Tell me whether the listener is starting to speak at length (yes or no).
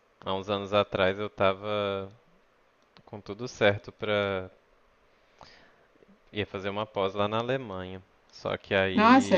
no